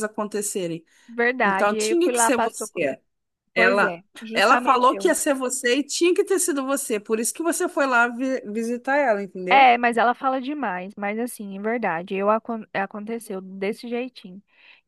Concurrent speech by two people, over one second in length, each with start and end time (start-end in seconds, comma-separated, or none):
1.4-2.8, 3.5-5.2